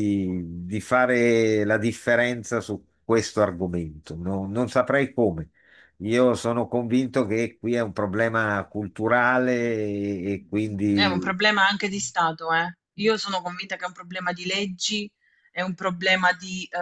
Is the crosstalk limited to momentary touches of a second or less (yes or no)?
yes